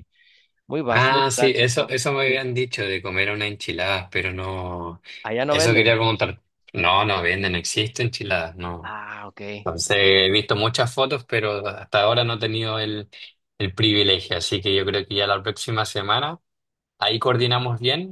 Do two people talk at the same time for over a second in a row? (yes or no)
yes